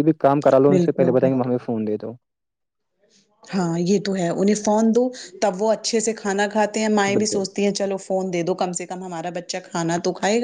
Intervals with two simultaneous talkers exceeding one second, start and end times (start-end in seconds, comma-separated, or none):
none